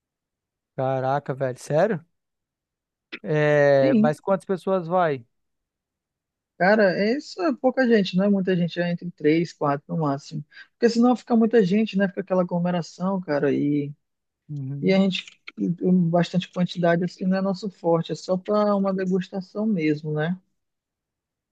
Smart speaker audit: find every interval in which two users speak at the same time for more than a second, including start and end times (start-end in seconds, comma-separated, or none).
none